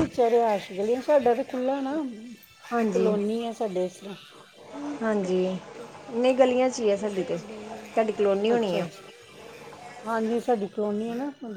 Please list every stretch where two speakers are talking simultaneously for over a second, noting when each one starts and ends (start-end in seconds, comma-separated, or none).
none